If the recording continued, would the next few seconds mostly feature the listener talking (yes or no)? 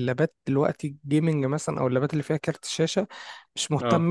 no